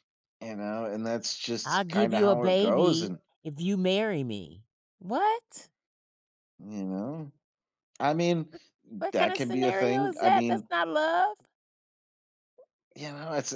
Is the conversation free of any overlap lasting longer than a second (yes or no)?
no